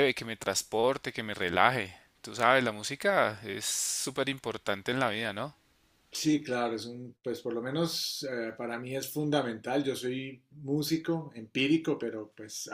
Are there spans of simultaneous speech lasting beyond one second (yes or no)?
no